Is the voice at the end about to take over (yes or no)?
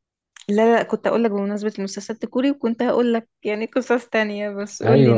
yes